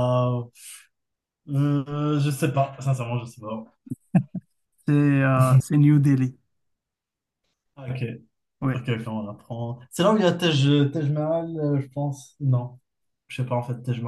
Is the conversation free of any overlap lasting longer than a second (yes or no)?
yes